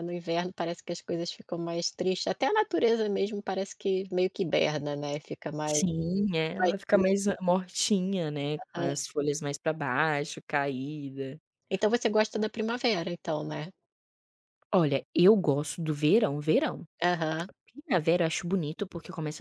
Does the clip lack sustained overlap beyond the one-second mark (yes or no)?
yes